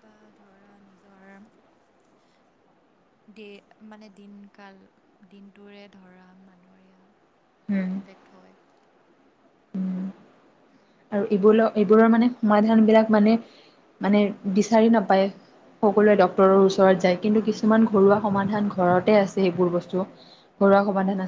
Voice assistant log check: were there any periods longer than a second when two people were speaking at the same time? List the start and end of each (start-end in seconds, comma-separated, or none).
none